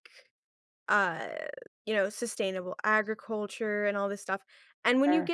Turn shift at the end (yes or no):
no